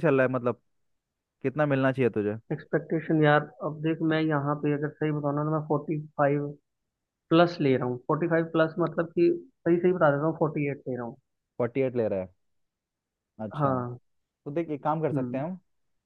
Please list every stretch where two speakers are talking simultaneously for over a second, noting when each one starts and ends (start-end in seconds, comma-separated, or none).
none